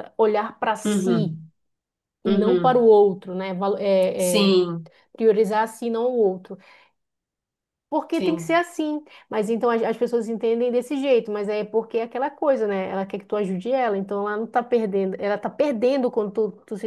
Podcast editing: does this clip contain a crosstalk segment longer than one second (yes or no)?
no